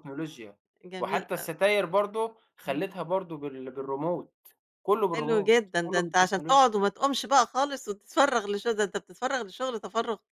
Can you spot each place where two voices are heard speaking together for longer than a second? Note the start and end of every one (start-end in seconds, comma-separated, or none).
5.1-6.7